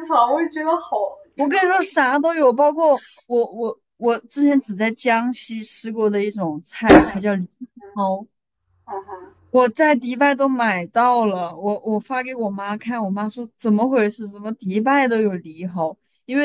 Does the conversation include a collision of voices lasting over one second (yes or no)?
no